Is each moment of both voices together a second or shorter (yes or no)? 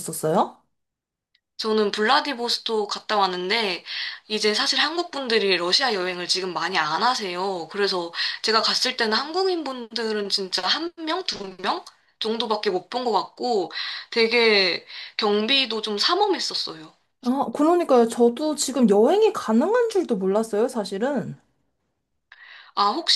yes